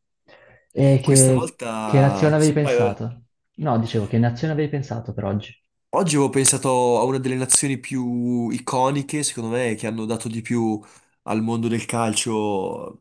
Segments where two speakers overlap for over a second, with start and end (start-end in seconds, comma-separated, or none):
1.0-3.0